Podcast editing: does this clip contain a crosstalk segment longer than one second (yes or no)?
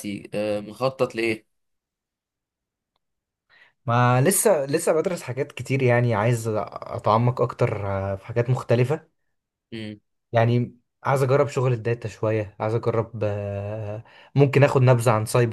no